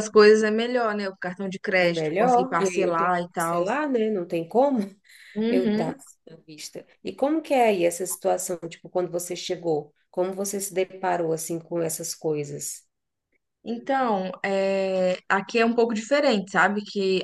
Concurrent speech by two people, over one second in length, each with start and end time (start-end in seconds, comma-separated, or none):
1.8-3.6